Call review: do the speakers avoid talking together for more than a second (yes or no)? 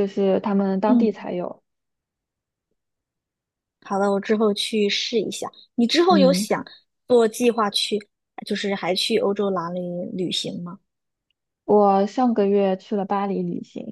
yes